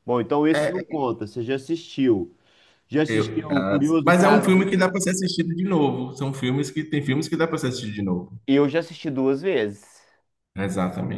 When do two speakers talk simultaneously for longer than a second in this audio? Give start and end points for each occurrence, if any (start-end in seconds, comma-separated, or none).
3.1-4.7